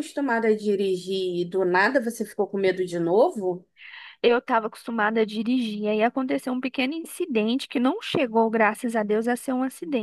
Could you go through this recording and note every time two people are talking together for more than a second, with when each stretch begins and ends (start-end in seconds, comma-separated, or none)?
none